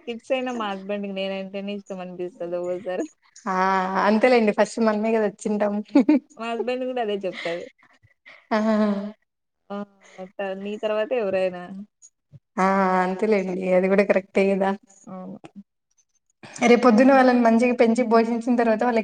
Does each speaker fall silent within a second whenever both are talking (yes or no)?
yes